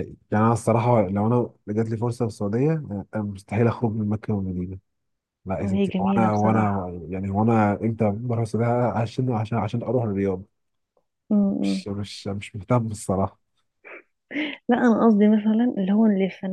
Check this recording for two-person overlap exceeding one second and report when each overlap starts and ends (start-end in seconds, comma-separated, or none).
5.6-6.9